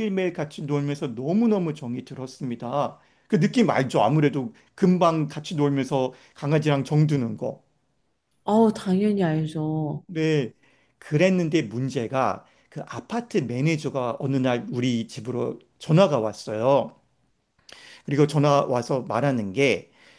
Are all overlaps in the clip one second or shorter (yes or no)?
yes